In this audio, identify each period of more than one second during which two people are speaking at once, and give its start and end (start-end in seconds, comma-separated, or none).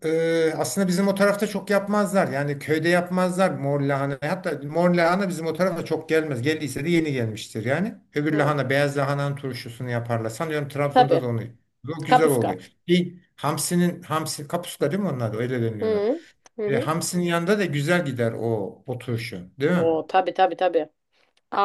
none